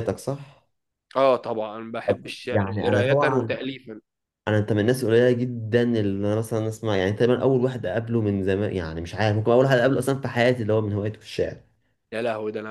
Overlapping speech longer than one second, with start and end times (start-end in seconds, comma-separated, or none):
2.1-3.6